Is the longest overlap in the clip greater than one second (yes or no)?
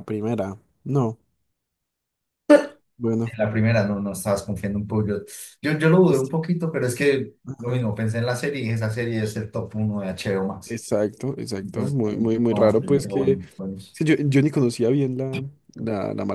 yes